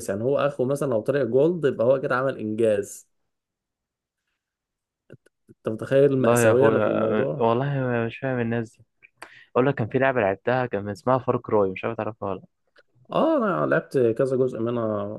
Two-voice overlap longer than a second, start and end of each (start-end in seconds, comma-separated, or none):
6.2-7.5